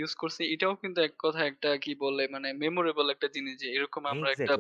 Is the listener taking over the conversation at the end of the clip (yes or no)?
no